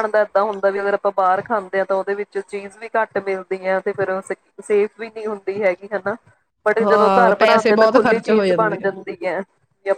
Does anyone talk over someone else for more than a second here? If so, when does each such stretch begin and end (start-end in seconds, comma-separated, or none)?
6.8-8.9